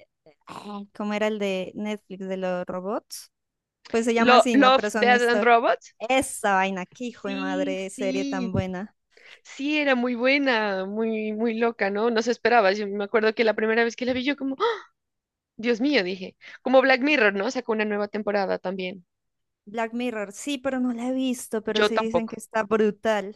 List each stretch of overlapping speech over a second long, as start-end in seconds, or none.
4.2-5.5, 7.1-8.5